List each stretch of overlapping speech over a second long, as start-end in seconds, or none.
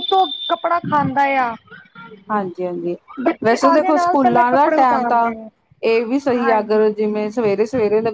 3.4-5.3